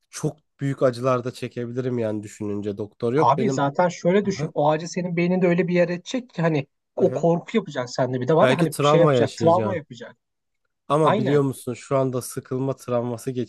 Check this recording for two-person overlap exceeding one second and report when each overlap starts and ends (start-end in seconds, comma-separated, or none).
8.4-9.8